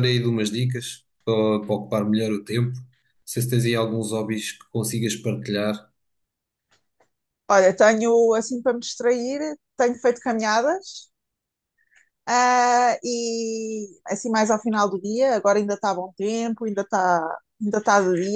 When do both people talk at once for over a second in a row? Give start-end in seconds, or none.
none